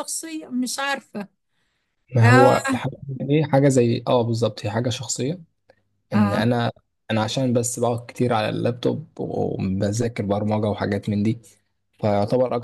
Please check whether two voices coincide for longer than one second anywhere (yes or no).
no